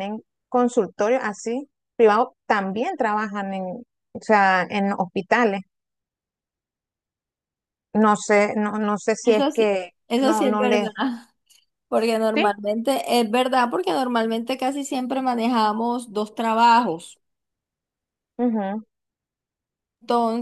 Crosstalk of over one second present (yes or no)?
yes